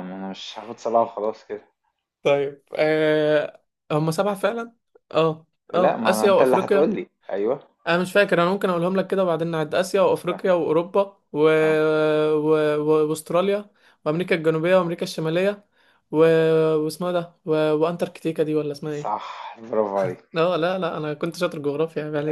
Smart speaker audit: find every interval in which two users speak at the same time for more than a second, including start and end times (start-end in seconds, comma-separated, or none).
5.7-6.9